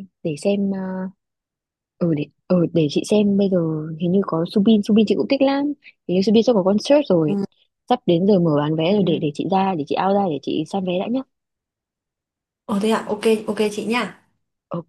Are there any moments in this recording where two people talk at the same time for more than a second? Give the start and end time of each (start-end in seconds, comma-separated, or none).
none